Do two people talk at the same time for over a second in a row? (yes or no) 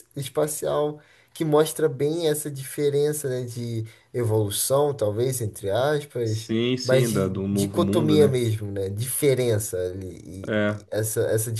yes